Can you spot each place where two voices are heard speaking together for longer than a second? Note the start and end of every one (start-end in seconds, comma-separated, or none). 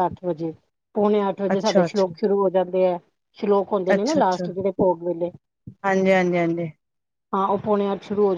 none